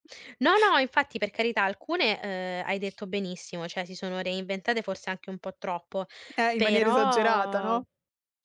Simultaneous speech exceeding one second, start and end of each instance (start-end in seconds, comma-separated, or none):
6.5-7.8